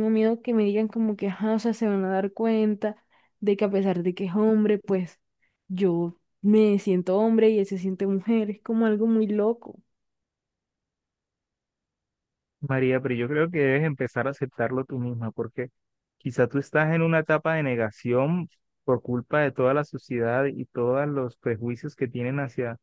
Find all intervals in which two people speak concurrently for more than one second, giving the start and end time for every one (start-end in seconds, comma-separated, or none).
none